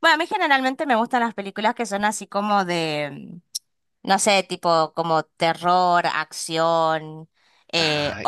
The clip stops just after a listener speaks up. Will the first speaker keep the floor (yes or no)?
yes